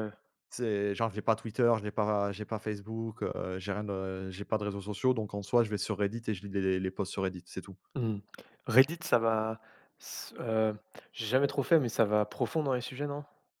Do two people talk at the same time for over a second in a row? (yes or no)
no